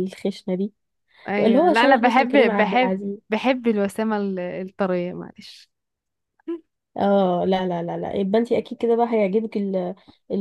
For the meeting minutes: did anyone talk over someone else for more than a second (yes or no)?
yes